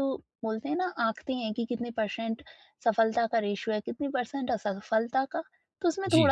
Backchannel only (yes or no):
yes